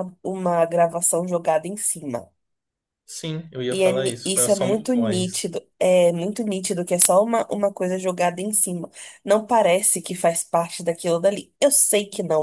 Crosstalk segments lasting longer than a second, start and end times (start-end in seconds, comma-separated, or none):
3.7-5.5